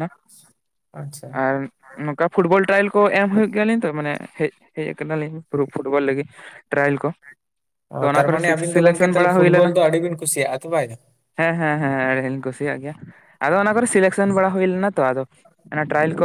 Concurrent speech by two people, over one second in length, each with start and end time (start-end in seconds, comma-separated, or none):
8.1-9.7